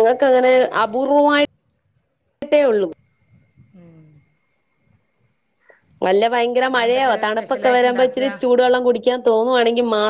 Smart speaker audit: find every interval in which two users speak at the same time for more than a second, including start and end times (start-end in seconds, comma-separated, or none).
6.7-8.3